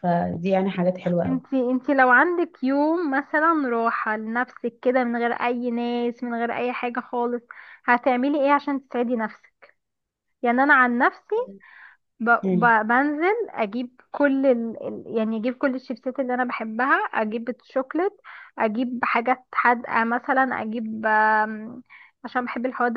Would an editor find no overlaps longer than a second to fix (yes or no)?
yes